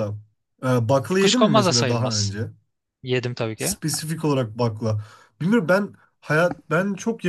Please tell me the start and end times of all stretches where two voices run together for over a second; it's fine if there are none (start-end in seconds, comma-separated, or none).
1.1-2.3